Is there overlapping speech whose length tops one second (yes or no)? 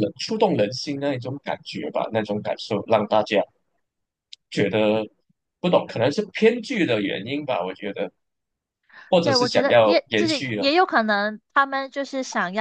yes